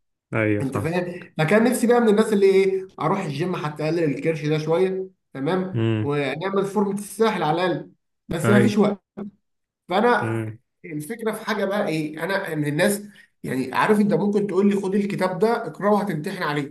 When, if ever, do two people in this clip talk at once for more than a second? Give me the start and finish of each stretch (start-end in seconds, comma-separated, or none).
none